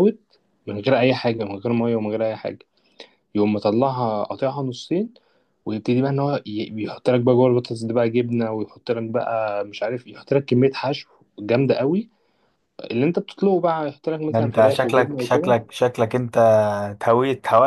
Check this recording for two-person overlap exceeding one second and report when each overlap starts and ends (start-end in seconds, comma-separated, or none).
14.3-15.6